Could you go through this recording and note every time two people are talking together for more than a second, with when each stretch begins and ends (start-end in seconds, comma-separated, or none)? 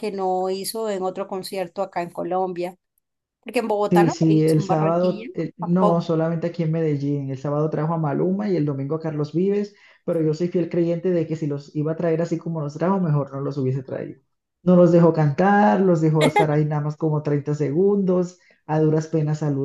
3.9-6.1